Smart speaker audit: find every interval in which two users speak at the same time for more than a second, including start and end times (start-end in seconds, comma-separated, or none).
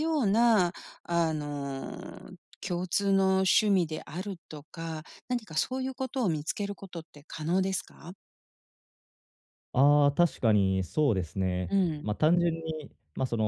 none